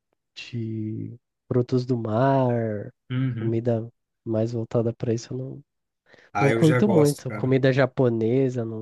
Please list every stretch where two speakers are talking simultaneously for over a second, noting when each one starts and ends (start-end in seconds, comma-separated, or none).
6.4-7.6